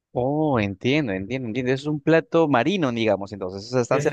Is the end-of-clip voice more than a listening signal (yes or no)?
yes